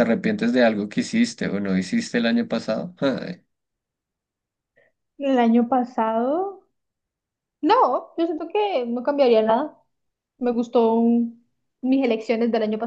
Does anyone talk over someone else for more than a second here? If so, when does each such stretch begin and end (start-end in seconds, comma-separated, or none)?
none